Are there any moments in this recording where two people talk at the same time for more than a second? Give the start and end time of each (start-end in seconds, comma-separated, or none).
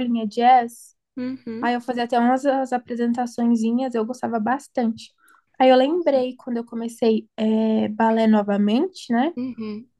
none